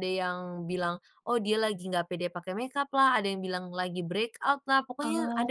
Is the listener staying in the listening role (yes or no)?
yes